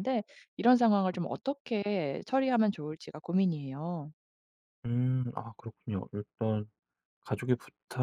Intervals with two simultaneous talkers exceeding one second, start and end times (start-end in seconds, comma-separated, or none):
none